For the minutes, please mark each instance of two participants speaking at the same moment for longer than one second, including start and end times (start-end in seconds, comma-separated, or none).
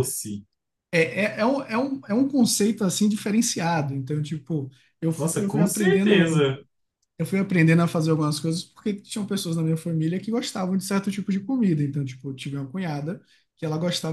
5.2-6.5